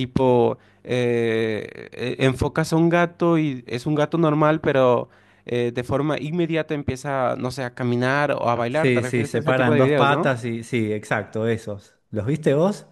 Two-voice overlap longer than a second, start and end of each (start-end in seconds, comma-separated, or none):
8.7-10.3